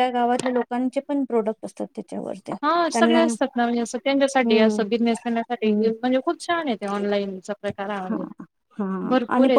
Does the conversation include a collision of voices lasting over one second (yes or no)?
no